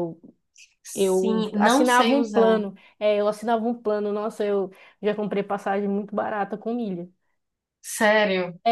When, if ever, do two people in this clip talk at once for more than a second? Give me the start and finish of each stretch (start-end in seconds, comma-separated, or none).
0.9-2.6